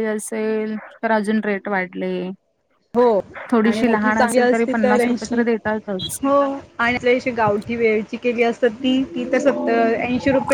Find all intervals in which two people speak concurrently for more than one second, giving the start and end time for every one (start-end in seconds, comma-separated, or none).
3.7-5.1